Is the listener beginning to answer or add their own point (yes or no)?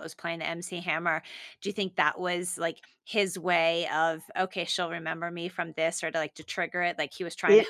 yes